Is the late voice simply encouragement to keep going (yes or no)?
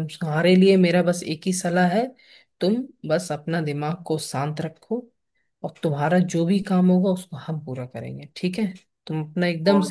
no